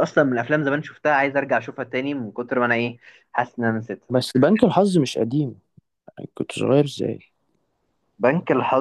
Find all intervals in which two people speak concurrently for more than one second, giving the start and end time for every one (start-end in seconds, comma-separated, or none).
none